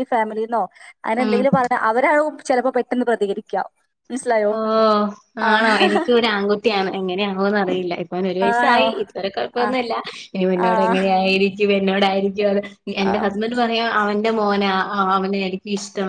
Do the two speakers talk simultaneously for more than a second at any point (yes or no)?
no